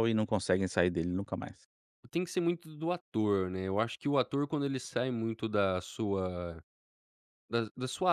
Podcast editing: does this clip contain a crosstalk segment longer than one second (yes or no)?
no